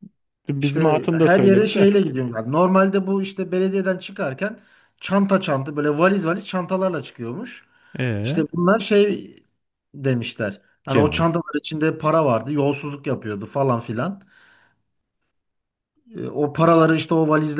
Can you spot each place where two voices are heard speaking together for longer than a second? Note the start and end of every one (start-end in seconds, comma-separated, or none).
0.6-1.9